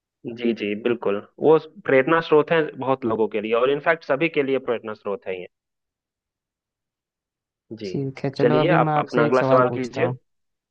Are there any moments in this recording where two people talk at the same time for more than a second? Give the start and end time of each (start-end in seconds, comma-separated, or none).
8.4-10.1